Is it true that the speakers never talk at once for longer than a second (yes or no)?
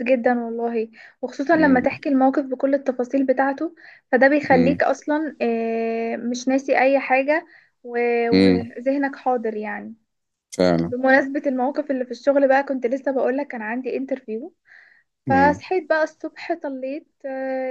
yes